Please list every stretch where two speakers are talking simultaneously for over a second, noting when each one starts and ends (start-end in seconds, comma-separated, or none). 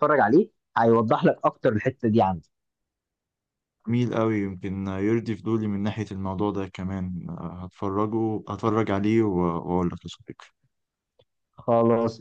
none